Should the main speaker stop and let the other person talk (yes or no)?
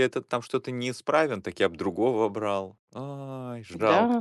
yes